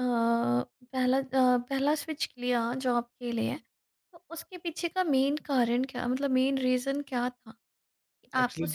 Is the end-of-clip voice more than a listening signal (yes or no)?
no